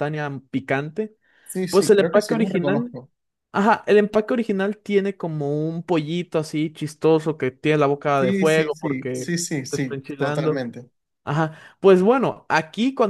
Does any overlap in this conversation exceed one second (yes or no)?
yes